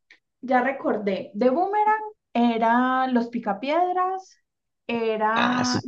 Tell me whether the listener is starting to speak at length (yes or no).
no